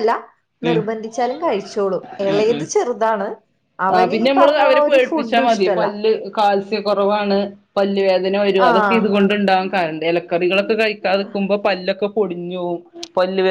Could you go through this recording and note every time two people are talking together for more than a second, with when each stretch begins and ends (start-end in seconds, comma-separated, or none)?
3.9-5.8